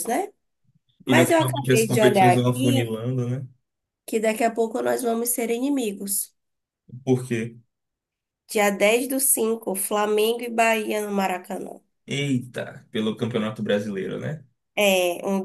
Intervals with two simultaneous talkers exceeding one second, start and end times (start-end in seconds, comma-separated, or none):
1.1-2.9